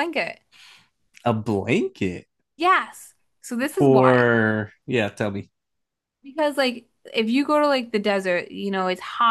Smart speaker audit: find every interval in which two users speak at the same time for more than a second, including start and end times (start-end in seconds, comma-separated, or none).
none